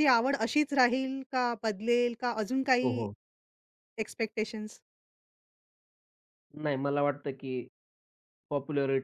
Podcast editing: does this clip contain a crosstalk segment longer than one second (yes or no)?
no